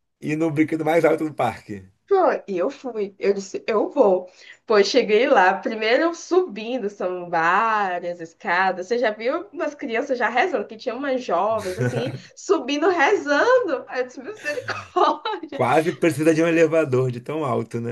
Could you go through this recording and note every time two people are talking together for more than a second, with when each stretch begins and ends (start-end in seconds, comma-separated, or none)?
none